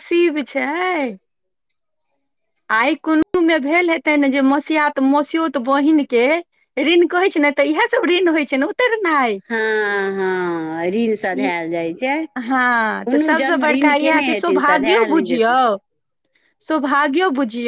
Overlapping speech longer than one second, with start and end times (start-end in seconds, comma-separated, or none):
13.1-15.5